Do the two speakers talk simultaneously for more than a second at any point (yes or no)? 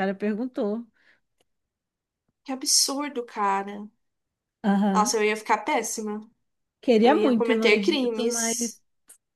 yes